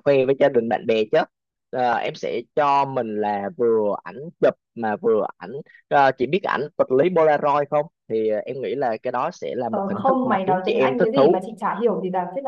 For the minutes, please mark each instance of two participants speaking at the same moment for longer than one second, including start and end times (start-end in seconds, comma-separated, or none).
9.7-11.4